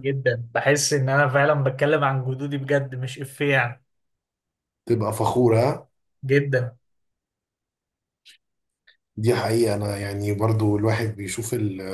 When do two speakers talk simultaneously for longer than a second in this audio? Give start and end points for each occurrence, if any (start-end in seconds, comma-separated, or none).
none